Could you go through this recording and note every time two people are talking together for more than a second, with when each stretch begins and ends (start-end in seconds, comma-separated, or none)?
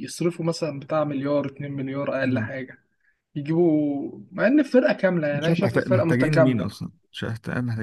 5.3-6.7